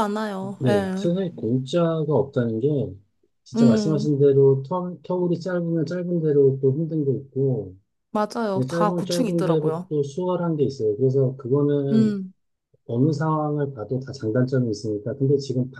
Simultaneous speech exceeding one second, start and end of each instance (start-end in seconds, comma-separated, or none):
8.5-9.9